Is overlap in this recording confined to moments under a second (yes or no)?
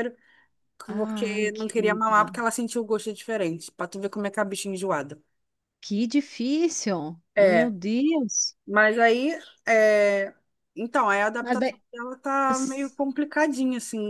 no